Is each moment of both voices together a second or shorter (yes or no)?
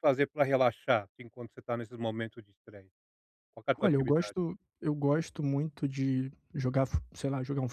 yes